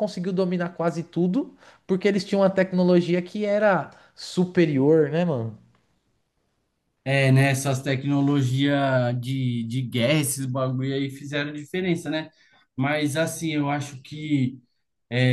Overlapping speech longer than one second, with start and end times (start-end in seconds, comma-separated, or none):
none